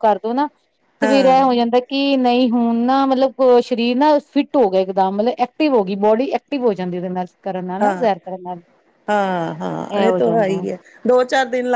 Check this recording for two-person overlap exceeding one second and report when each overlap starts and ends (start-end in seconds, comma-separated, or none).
none